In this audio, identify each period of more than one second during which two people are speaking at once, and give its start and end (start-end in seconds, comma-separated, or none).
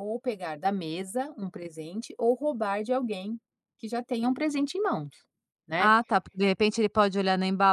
none